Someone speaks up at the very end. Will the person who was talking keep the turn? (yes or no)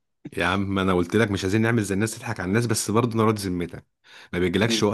yes